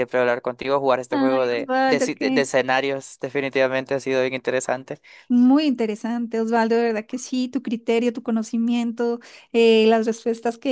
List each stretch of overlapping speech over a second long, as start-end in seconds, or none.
1.1-2.5